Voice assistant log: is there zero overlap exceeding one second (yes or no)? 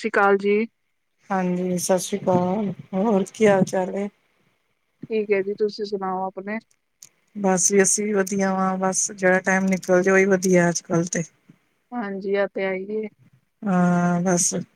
yes